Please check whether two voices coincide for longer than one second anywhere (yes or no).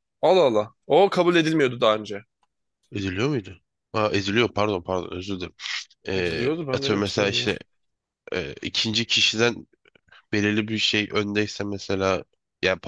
yes